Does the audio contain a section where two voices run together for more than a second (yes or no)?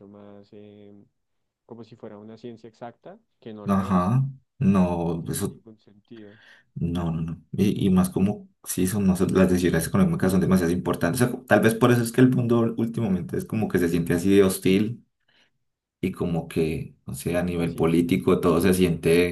no